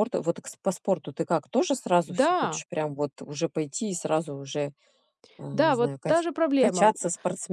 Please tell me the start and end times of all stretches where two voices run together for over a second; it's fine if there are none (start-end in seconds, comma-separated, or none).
5.5-6.9